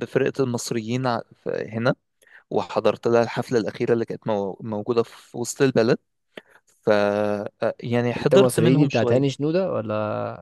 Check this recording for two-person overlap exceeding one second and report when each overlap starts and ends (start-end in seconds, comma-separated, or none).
8.2-9.4